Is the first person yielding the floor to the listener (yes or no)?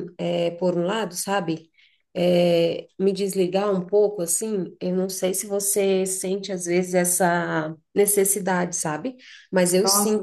yes